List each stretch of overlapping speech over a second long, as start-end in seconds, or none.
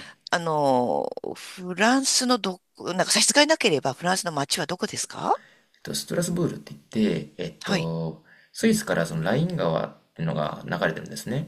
none